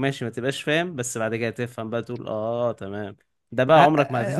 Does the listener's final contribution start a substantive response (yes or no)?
yes